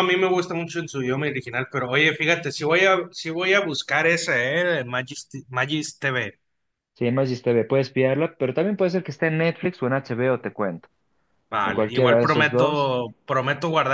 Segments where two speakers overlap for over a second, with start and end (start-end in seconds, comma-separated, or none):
11.6-12.9